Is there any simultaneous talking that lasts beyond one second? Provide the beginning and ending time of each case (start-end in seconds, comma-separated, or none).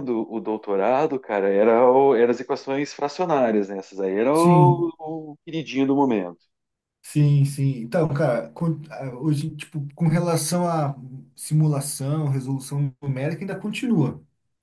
none